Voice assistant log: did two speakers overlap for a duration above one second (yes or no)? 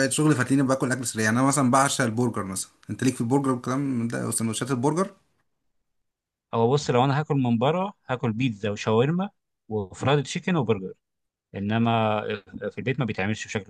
no